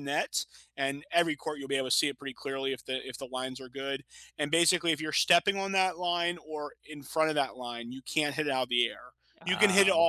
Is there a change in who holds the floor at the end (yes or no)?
no